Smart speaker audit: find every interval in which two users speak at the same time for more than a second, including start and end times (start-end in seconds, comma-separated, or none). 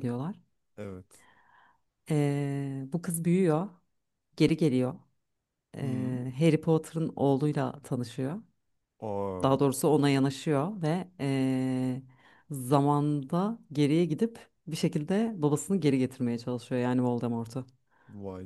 none